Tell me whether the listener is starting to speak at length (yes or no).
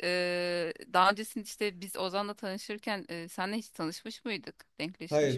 yes